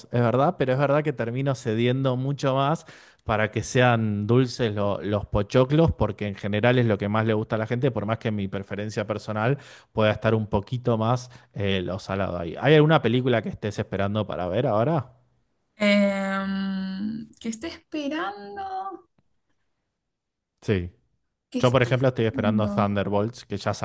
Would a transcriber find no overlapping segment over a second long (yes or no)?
no